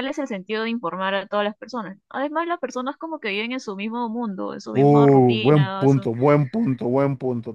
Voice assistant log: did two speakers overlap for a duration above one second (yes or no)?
yes